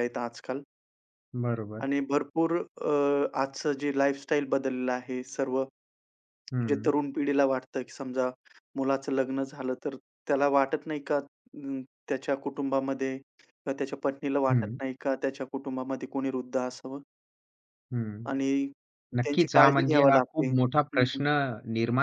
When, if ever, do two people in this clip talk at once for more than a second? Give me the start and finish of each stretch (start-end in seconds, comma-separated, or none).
19.2-21.2